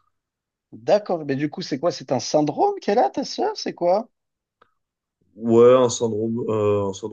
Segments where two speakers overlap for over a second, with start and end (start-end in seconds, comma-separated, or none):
none